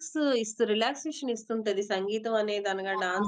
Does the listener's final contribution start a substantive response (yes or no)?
no